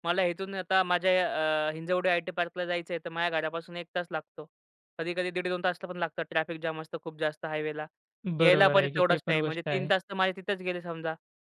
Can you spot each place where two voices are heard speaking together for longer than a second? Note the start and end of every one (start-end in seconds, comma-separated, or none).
8.4-9.9